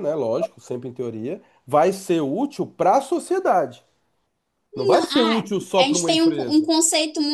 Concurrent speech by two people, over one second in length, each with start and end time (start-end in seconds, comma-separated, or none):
4.7-6.7